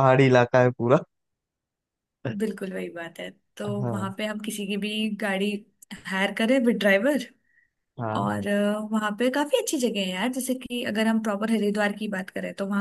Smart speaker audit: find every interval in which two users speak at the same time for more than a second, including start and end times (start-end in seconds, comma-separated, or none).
none